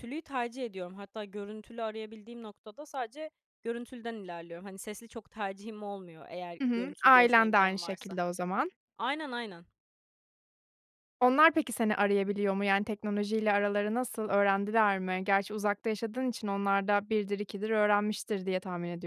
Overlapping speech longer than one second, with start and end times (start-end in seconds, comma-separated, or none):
6.6-8.2